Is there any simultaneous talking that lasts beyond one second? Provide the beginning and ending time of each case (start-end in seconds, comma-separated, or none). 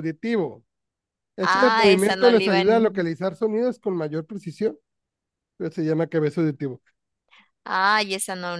1.4-3.1